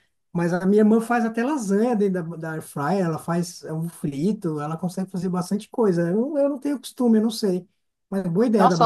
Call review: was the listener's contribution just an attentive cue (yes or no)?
no